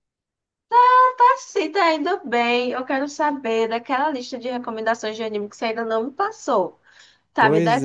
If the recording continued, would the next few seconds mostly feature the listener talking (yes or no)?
yes